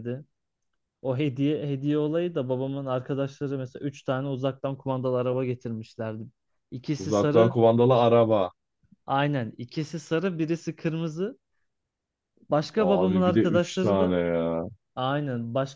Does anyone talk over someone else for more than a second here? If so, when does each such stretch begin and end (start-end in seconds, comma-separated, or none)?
12.8-14.2